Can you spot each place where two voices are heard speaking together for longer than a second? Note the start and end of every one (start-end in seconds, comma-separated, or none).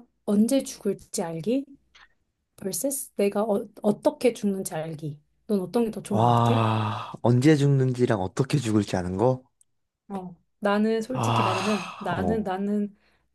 11.1-12.5